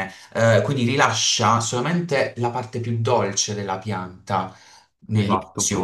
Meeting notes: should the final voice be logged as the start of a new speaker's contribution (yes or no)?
no